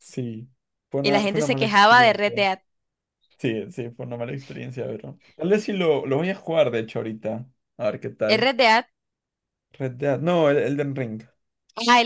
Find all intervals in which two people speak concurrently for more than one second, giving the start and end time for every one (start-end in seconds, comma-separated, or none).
1.0-2.4